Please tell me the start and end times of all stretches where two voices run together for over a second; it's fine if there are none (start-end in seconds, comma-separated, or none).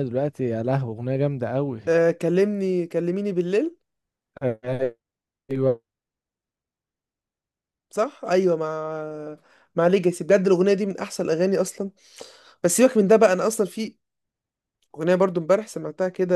none